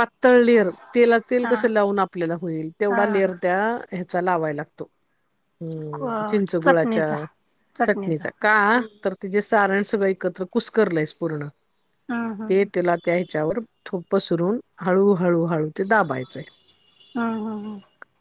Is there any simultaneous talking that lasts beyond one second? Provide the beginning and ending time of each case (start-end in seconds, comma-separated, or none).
5.7-7.1